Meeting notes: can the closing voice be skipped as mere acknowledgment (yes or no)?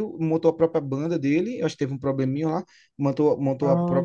yes